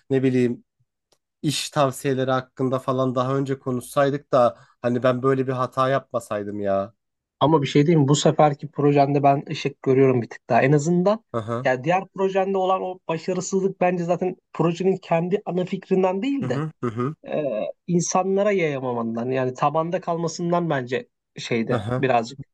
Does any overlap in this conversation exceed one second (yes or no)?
no